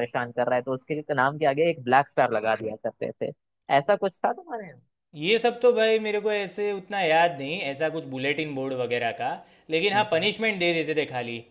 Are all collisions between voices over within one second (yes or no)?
yes